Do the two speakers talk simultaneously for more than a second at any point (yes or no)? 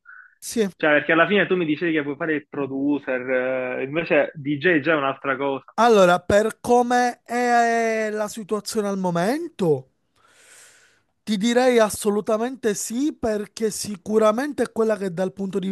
no